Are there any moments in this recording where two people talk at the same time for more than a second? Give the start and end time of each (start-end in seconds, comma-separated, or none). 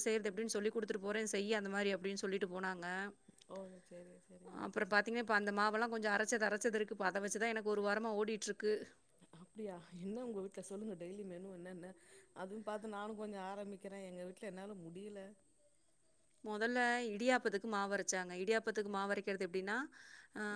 none